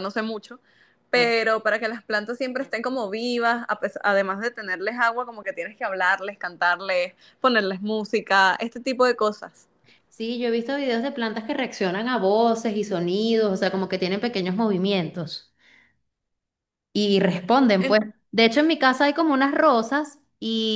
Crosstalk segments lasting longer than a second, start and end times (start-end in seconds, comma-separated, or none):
none